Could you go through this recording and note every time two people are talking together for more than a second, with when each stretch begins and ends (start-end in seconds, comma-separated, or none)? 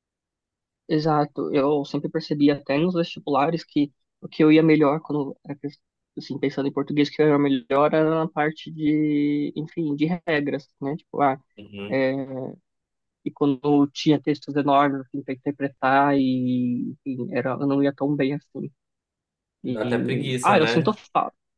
19.7-21.0